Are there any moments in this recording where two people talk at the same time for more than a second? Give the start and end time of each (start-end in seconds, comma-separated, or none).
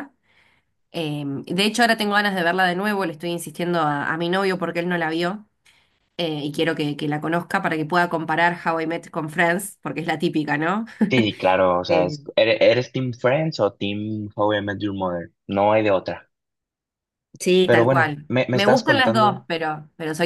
17.6-19.4